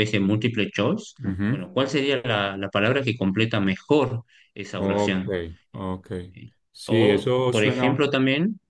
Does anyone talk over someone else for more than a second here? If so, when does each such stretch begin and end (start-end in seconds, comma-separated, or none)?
6.7-8.0